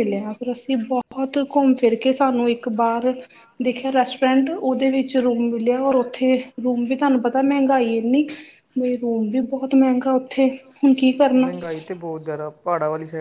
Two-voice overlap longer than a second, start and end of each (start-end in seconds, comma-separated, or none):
none